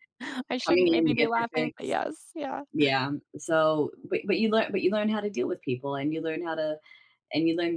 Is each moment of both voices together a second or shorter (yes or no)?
no